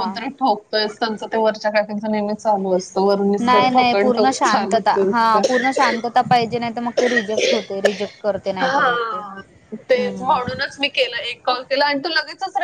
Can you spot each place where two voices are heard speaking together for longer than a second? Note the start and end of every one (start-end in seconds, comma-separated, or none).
3.4-5.4